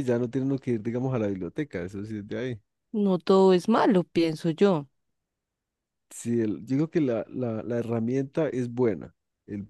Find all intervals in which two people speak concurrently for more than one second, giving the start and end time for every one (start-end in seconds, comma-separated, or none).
none